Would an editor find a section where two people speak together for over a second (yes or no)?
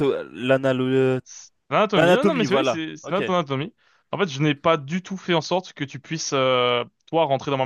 yes